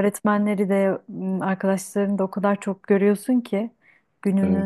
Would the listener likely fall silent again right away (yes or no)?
yes